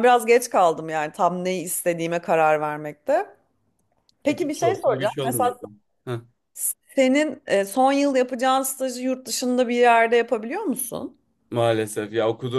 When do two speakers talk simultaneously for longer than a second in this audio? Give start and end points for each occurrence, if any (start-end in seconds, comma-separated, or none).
4.3-5.5